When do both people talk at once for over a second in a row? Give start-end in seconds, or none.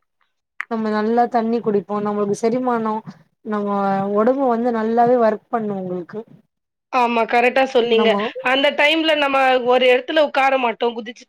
none